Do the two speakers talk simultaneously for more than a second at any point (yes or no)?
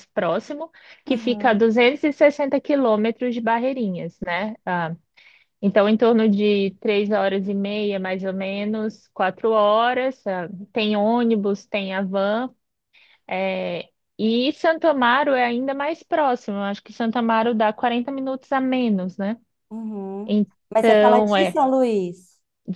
yes